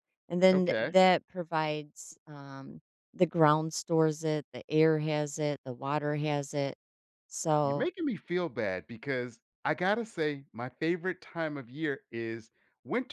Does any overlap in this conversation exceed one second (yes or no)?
no